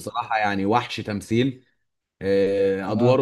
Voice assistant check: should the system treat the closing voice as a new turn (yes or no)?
no